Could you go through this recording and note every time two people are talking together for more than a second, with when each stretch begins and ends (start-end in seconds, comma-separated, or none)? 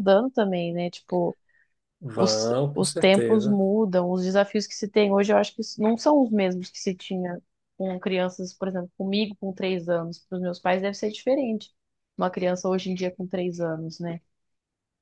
2.1-3.6